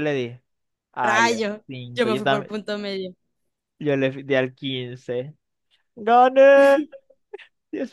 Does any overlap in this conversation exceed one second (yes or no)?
yes